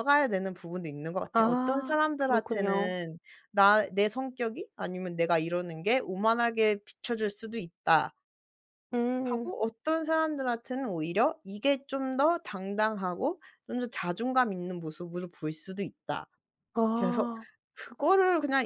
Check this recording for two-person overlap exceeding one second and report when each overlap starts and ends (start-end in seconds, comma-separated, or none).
1.3-2.9